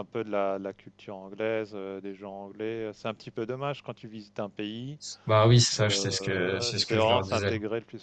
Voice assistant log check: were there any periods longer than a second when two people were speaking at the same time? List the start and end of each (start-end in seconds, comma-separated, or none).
5.8-7.5